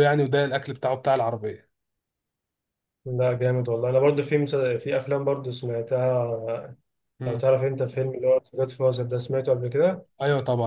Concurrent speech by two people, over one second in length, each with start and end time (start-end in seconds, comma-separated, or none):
none